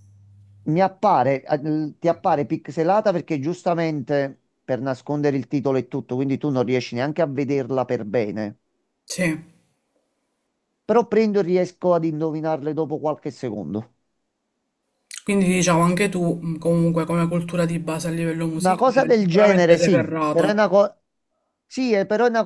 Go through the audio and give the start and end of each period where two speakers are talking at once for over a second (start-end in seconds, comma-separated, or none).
18.6-20.6